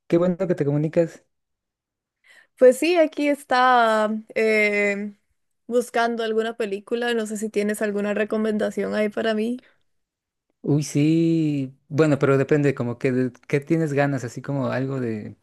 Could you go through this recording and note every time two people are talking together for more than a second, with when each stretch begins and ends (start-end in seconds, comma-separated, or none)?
none